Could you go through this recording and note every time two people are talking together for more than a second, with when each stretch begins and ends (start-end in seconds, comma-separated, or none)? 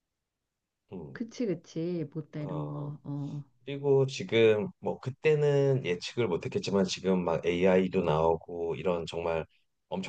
none